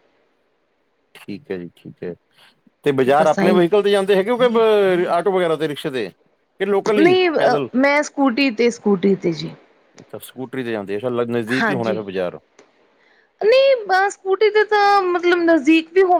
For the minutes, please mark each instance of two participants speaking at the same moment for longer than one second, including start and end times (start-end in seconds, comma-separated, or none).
none